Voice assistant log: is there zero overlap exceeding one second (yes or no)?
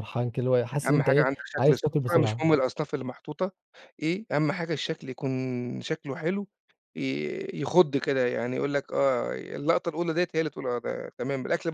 no